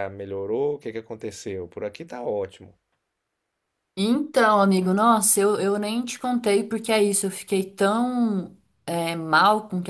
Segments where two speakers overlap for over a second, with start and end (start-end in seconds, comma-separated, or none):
none